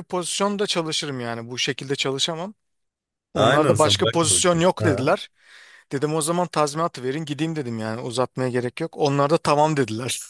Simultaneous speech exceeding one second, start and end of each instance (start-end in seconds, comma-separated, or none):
3.4-5.0